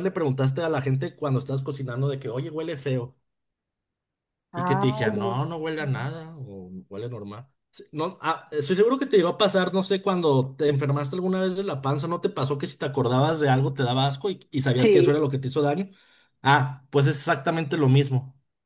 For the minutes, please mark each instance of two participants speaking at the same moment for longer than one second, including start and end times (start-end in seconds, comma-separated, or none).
4.5-5.8